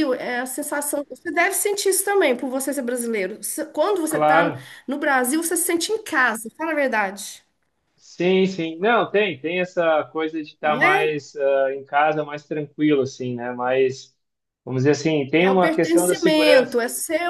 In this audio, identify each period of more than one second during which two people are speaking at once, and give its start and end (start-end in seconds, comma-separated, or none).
15.4-16.8